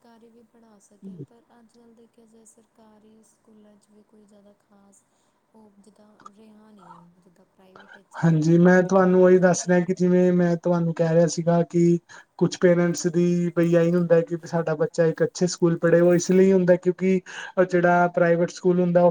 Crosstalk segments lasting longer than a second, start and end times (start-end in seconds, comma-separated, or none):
8.2-9.8